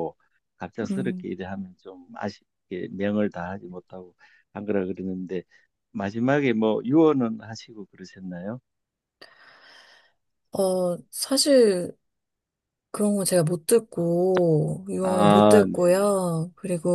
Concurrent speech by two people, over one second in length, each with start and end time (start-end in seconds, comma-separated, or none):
15.0-16.3